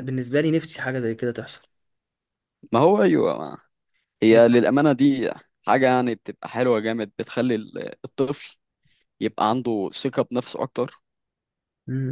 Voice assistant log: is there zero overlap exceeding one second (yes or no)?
yes